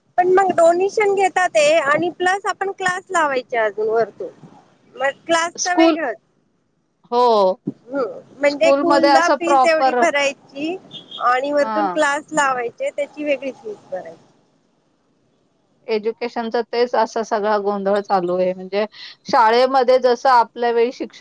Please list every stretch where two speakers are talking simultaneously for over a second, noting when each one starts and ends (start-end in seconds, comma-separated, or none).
8.5-10.0